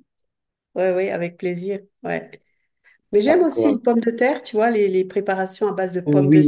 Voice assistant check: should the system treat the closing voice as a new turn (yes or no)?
yes